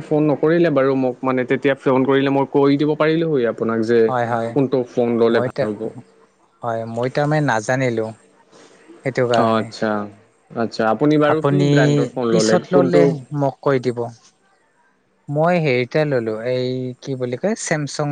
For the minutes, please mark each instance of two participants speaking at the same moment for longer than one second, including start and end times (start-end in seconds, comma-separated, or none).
none